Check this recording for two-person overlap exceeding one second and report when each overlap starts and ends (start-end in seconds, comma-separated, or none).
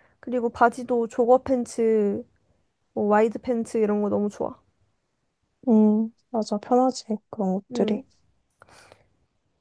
none